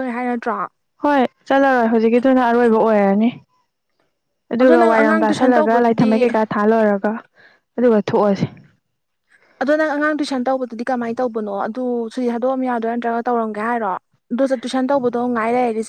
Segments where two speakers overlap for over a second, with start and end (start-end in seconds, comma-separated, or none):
4.6-6.1